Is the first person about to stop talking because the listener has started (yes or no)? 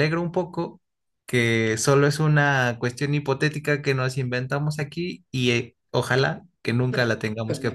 yes